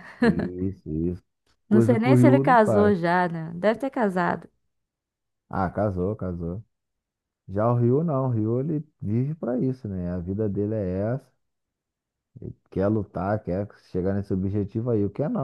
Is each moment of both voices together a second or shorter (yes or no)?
no